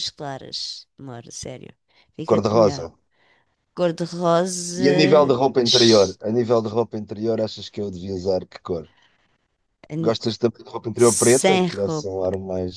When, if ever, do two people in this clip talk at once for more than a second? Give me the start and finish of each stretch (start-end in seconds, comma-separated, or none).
10.9-12.3